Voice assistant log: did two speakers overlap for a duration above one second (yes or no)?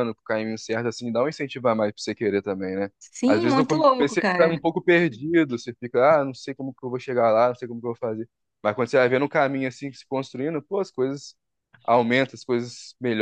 yes